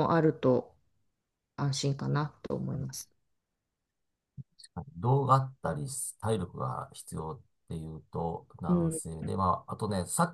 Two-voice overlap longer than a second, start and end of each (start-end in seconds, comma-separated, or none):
none